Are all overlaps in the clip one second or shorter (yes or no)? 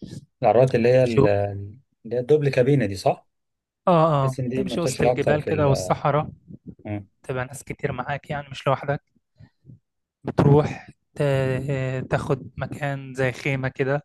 no